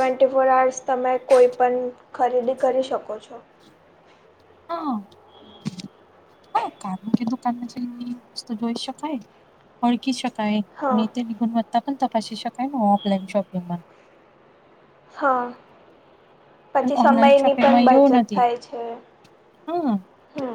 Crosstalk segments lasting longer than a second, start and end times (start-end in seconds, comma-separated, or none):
16.8-18.4